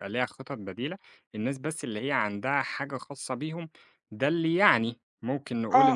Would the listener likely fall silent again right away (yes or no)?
no